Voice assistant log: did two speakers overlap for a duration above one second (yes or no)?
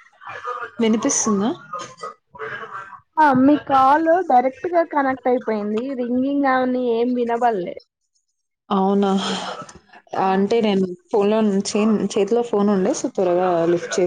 no